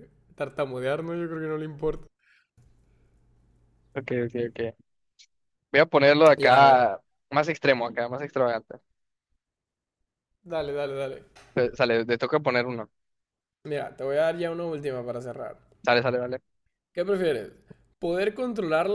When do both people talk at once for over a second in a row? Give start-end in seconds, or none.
none